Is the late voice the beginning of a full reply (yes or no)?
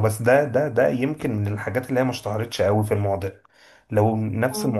no